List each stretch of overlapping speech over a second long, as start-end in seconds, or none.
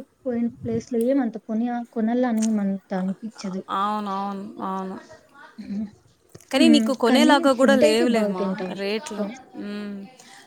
6.6-8.7